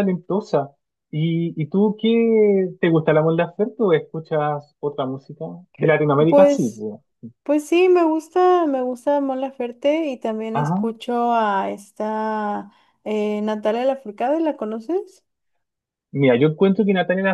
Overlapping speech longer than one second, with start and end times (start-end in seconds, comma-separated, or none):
none